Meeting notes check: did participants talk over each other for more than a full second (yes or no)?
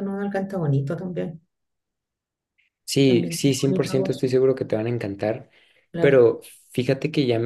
yes